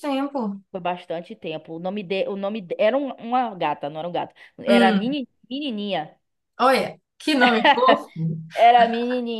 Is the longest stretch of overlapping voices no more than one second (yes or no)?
yes